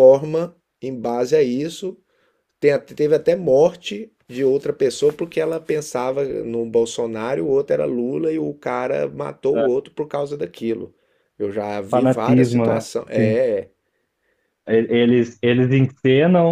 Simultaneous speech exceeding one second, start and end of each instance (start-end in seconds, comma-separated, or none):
11.9-13.4